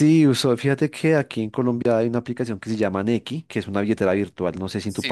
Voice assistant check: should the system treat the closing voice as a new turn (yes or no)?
yes